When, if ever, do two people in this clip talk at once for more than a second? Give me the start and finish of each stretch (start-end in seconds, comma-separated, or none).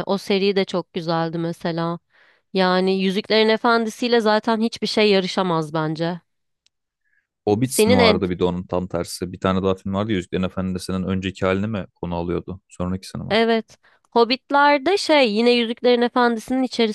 none